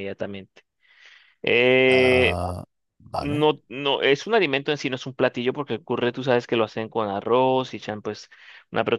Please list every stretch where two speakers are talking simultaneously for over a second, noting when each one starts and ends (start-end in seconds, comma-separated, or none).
none